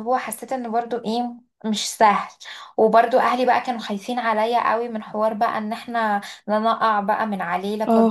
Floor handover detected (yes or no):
yes